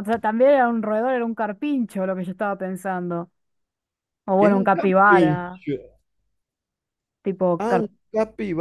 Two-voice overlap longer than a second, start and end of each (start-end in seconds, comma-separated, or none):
4.4-5.6